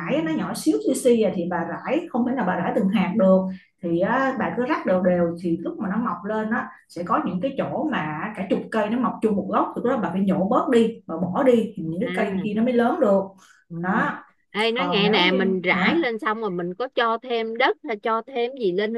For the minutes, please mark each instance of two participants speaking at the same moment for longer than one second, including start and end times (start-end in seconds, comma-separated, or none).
14.7-16.1